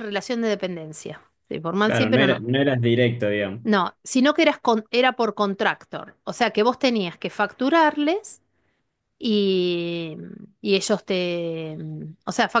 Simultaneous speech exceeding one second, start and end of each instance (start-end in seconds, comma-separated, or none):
none